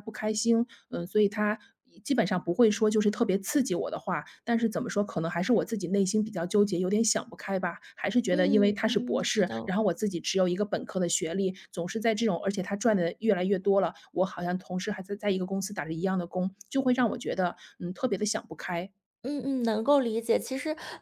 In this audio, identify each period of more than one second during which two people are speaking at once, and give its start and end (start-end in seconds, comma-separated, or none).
8.3-9.7